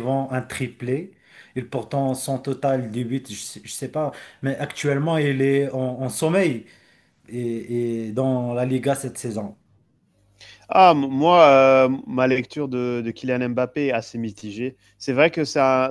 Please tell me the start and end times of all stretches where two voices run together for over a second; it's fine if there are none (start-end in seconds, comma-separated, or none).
none